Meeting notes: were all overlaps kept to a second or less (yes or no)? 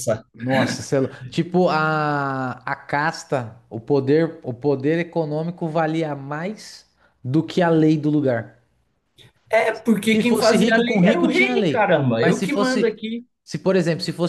no